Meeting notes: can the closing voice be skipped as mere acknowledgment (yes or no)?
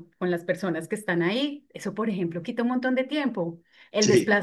yes